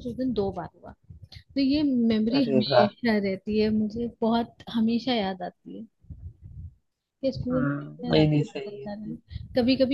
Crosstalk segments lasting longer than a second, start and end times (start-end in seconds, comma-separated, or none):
7.5-9.1